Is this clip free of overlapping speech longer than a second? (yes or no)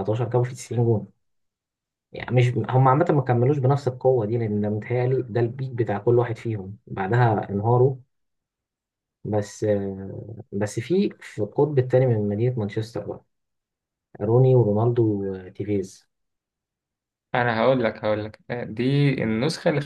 yes